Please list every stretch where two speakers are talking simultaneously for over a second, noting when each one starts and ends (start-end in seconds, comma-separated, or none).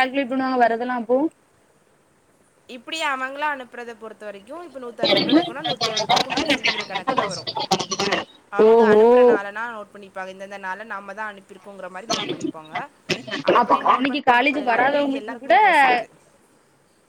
13.6-15.6